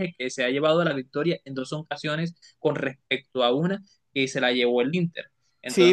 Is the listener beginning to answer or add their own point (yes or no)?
yes